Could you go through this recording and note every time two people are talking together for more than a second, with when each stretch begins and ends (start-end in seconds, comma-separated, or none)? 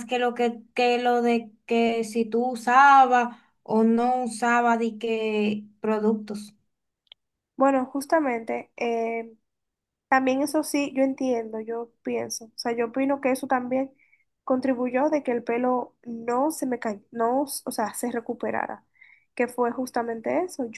none